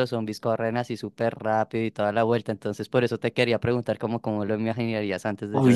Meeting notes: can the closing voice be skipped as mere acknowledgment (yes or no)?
yes